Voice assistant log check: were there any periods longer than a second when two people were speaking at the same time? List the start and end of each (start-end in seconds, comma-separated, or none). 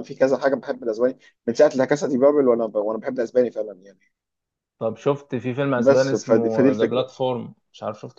5.8-7.1